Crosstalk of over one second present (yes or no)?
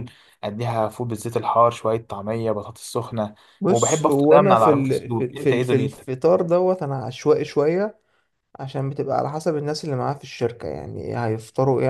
yes